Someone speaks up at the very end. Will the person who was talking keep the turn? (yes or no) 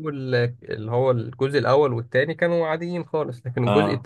yes